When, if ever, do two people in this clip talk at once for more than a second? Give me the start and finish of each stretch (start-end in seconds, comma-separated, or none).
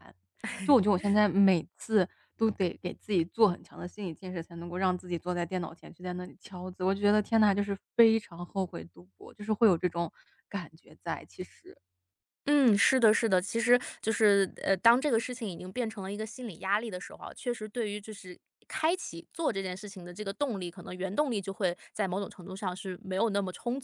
none